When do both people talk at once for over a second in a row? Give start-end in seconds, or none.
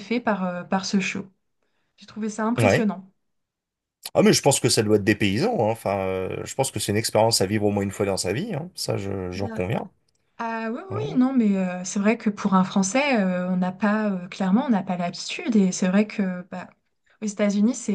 none